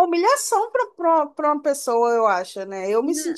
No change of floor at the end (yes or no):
yes